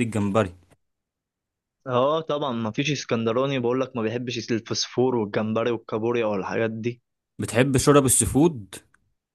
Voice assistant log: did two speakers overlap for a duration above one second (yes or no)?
no